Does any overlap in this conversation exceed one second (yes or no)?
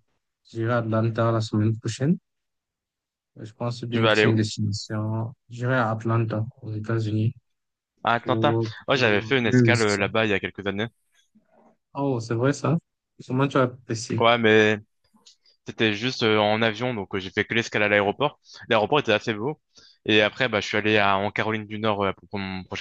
yes